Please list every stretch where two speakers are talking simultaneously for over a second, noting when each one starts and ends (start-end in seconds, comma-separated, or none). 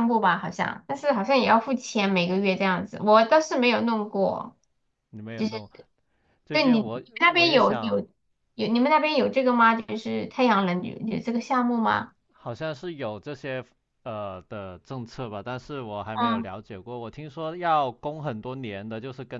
6.5-8.1